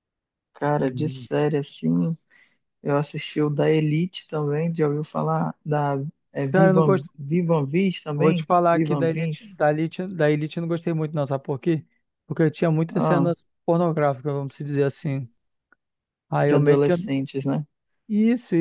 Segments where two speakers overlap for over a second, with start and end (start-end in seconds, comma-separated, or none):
8.2-9.6